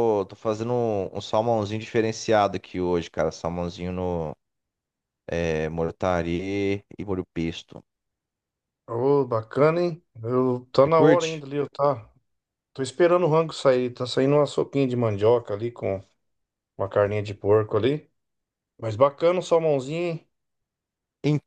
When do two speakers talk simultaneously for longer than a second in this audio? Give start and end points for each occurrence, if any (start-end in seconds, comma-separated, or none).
none